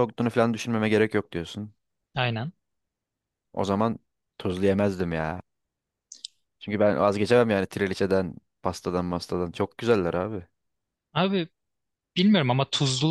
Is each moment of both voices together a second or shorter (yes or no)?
yes